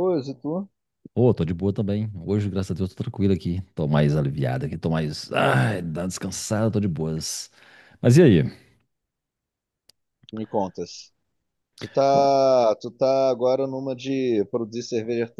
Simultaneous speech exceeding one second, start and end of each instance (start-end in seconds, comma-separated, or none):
none